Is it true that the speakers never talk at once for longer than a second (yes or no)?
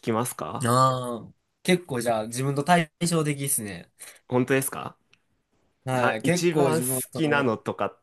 no